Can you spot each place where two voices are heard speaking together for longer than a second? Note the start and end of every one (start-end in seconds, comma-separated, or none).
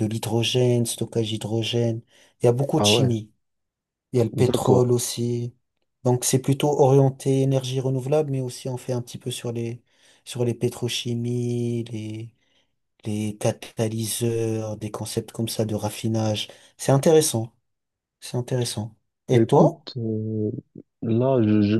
none